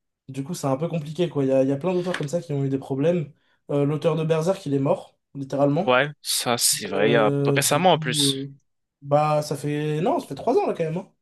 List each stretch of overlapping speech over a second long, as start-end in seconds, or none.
7.0-8.4